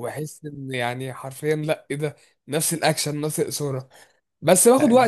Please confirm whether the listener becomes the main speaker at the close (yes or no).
no